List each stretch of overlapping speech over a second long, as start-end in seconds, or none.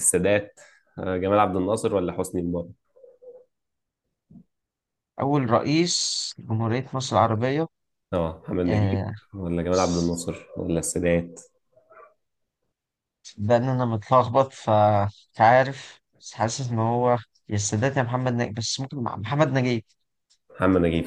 none